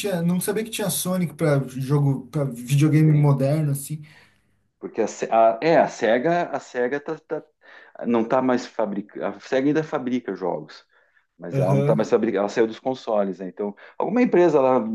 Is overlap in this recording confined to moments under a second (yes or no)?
yes